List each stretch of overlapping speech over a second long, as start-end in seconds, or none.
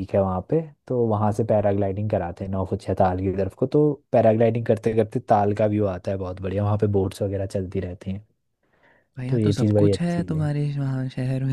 9.3-10.5